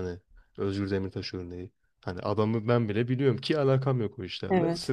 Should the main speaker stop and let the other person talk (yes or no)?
no